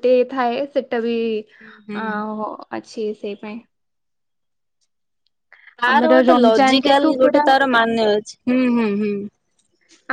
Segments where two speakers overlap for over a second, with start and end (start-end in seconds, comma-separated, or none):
5.9-7.4